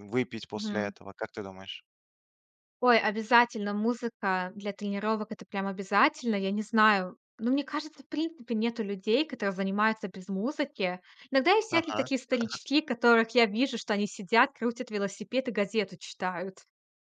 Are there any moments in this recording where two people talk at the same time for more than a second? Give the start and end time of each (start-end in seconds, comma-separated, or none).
none